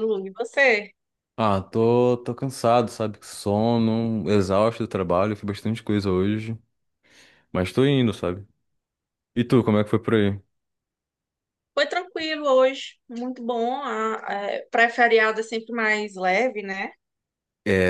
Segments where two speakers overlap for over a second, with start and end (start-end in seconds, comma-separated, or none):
none